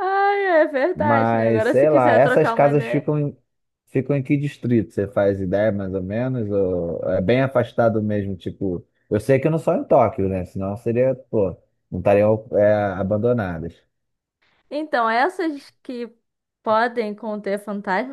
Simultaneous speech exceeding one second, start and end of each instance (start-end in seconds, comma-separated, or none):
0.9-3.1